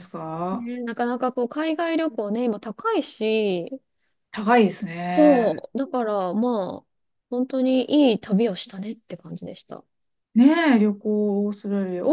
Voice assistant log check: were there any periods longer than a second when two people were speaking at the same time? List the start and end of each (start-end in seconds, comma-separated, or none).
none